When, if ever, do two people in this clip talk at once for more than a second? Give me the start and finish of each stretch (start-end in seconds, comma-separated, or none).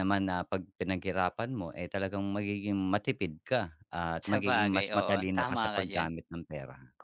4.2-6.1